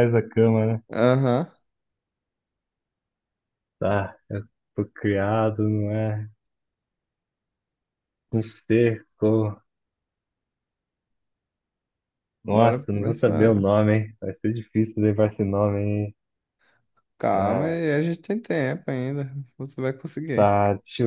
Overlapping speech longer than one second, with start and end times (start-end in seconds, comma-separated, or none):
12.5-13.7